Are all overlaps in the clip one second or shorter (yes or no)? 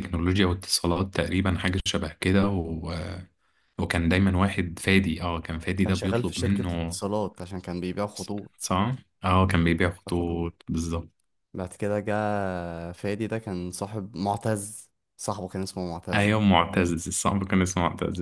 no